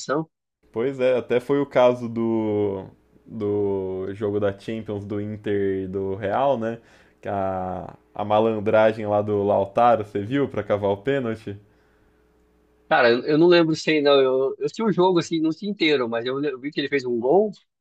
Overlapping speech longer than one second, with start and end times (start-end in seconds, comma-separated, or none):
none